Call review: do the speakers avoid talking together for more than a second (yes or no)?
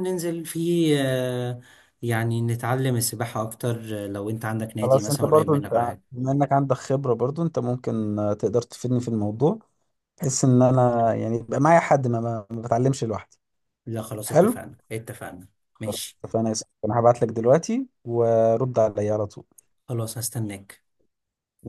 no